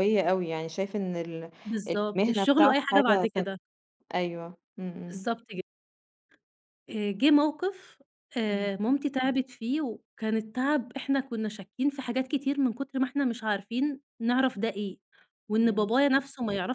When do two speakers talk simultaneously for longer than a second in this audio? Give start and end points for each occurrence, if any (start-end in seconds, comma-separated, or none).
1.9-3.6